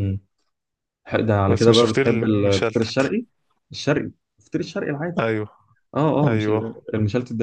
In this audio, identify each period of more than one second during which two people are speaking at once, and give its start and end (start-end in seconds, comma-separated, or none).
1.5-3.1